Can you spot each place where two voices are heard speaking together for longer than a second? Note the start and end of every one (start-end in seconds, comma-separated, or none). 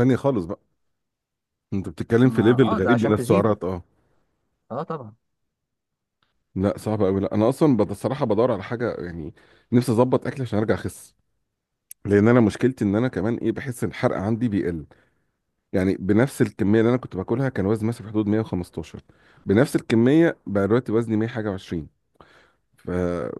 2.2-3.5